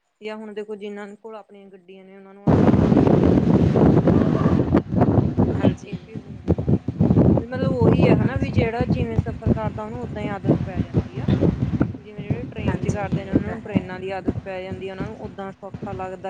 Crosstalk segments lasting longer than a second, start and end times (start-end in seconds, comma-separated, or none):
12.6-13.9